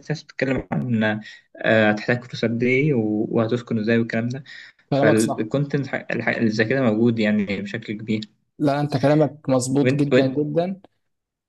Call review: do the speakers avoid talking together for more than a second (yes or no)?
yes